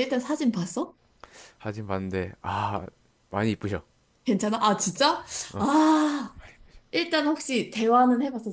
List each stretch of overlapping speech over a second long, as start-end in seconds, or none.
none